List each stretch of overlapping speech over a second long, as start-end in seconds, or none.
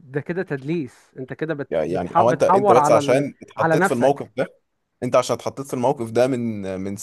1.7-4.3